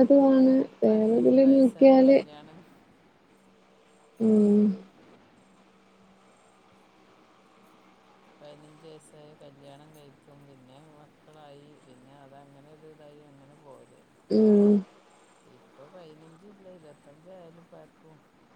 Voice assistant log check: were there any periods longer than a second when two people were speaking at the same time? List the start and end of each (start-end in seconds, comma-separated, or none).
0.9-2.2